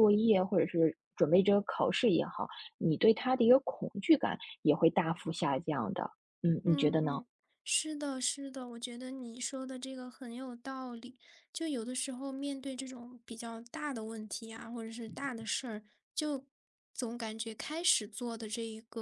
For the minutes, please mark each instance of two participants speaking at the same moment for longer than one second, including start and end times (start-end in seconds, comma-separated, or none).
none